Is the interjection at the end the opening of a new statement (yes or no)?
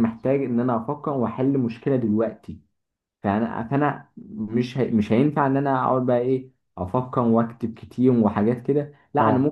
no